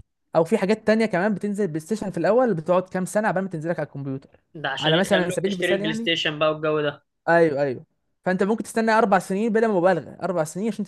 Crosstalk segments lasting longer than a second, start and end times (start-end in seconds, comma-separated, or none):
4.8-6.1